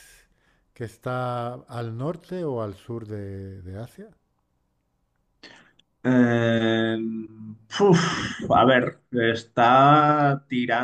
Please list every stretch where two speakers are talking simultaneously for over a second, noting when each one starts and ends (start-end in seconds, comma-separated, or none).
none